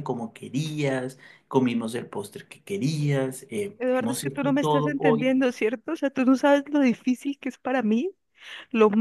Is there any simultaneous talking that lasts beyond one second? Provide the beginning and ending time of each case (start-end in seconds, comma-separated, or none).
3.8-5.4